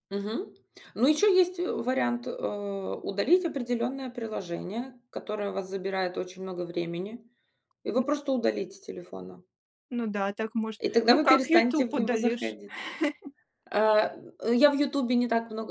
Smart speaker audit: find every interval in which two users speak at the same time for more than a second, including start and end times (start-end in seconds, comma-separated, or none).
10.8-12.6